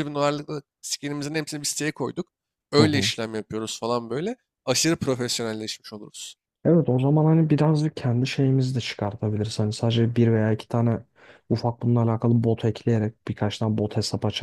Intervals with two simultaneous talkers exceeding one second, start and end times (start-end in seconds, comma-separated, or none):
none